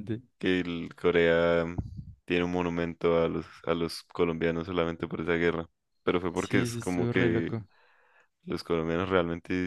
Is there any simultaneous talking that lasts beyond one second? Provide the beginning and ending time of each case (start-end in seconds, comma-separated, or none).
6.3-7.6